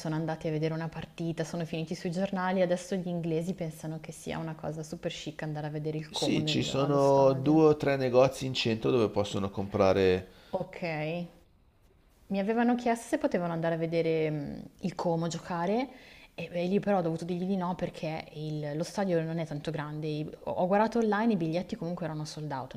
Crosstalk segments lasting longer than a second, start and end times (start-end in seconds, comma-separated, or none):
6.1-7.6